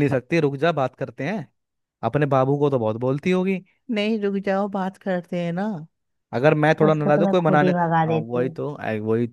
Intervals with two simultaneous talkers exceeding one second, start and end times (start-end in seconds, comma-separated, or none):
6.9-8.6